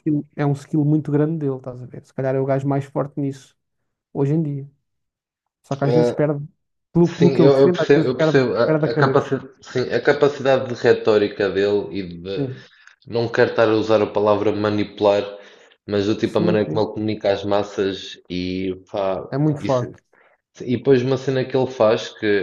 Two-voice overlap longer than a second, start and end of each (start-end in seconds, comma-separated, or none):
7.0-9.3